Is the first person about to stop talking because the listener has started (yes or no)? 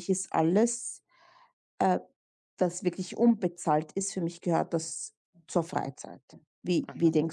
yes